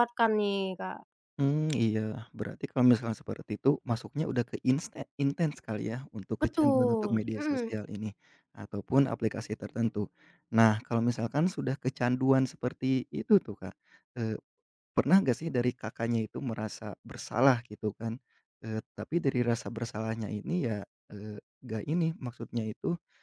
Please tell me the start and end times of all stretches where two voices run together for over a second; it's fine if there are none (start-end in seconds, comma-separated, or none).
6.4-7.7